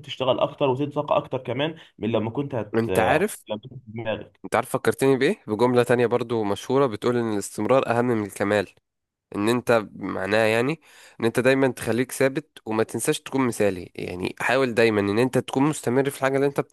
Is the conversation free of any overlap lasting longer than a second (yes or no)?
yes